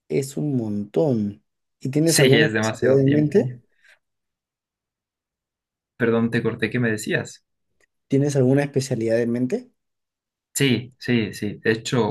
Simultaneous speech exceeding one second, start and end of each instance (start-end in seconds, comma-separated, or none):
2.0-3.5